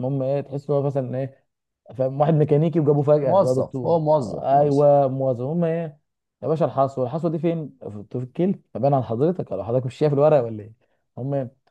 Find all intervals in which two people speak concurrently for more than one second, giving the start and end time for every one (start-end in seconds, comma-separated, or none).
3.2-4.8